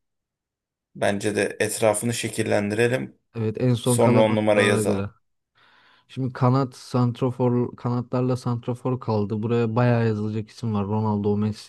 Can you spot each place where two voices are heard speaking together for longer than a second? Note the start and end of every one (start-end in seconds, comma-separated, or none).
3.8-5.1